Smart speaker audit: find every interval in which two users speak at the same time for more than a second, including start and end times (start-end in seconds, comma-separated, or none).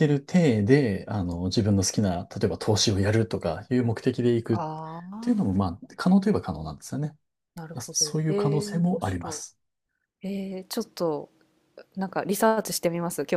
7.8-9.4